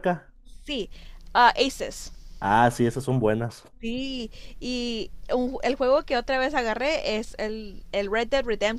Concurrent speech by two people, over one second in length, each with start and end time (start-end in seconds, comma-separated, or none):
none